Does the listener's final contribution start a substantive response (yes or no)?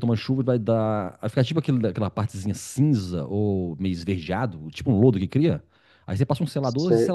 no